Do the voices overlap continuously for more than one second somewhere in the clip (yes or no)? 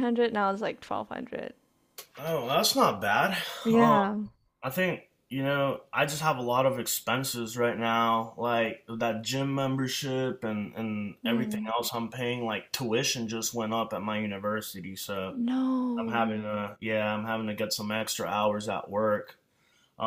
no